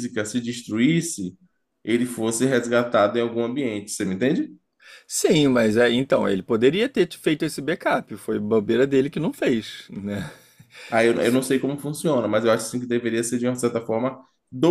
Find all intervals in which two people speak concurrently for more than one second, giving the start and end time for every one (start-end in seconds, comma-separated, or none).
none